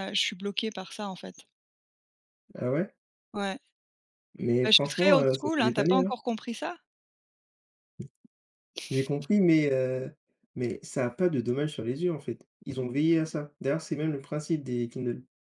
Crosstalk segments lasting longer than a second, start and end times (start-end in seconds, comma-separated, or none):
4.6-6.1